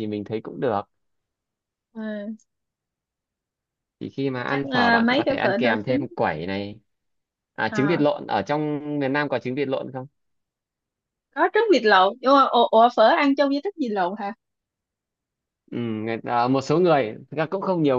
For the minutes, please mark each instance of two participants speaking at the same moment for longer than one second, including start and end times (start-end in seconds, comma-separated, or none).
4.5-6.1